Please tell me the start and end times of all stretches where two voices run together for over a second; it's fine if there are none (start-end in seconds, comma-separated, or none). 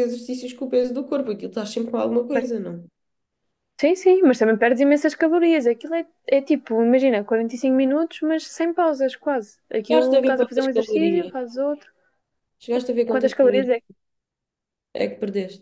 9.9-11.3